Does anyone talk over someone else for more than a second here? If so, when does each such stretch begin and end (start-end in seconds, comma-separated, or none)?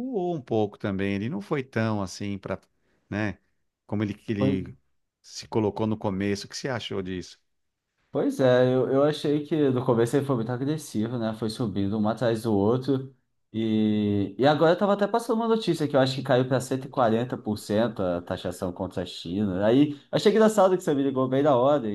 none